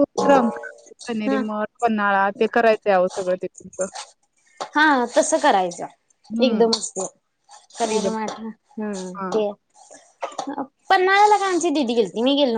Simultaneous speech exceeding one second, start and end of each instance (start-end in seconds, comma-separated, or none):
none